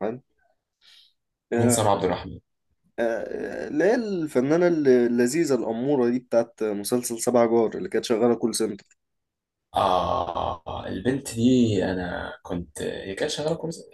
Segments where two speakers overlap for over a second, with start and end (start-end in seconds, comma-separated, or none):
none